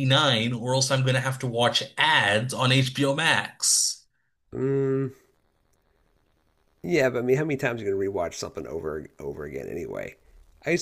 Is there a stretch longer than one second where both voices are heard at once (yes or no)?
no